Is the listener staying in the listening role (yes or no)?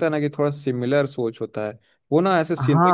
yes